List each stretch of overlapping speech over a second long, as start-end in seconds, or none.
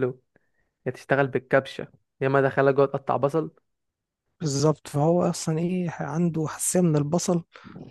none